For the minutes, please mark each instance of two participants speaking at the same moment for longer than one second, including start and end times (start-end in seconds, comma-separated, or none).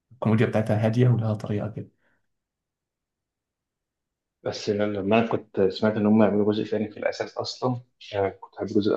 none